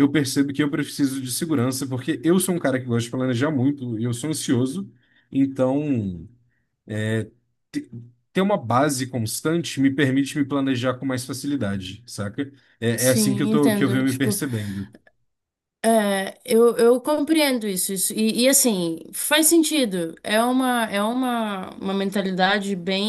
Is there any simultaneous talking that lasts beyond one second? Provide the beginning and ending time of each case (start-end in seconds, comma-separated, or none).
13.0-14.4